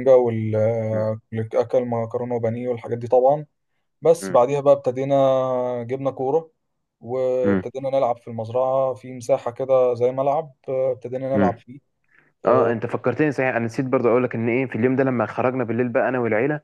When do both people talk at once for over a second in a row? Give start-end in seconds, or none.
none